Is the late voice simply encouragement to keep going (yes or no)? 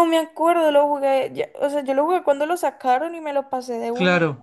no